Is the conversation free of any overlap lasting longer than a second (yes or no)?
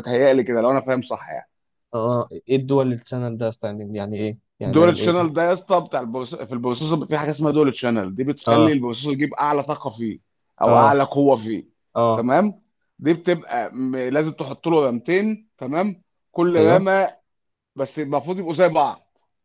yes